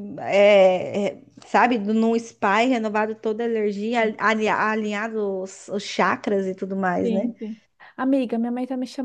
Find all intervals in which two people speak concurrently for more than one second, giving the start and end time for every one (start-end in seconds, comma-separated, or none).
none